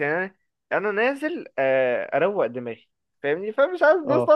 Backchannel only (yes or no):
yes